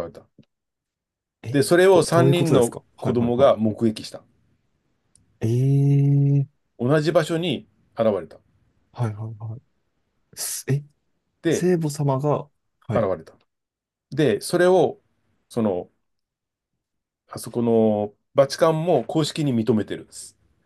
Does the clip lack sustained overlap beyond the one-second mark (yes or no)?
no